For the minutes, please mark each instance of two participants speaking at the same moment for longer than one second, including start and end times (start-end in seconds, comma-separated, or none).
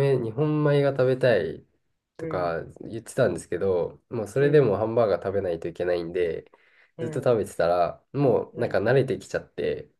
none